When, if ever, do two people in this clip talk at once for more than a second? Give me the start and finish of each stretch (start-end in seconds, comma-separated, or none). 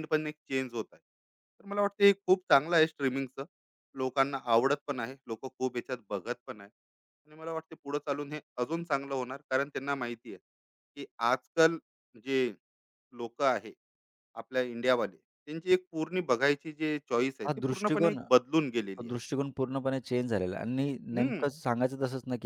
17.5-19.1